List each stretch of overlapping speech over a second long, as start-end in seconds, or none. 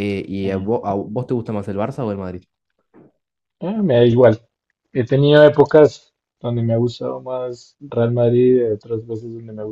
none